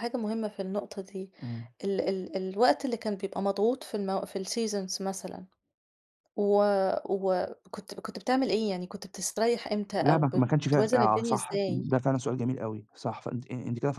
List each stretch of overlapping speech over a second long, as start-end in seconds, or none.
10.0-11.9